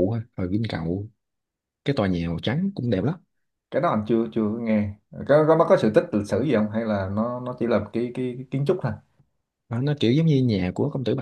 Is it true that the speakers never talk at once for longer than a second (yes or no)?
yes